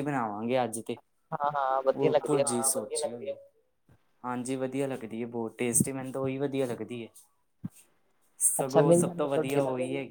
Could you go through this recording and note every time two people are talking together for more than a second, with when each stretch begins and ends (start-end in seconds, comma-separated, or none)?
none